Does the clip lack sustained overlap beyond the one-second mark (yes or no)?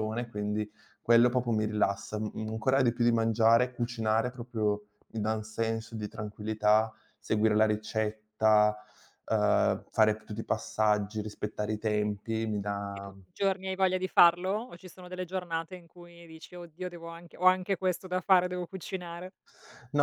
yes